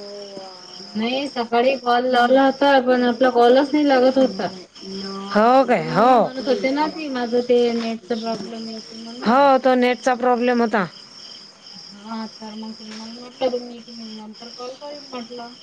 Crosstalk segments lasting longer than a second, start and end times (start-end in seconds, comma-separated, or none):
none